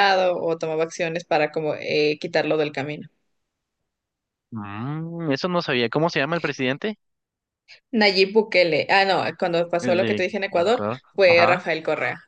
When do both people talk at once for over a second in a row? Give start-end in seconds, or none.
9.8-11.6